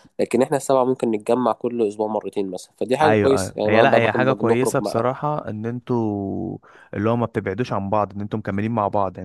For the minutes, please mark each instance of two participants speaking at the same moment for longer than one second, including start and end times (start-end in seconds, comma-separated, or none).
3.0-5.1